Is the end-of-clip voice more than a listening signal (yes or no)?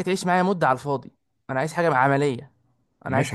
yes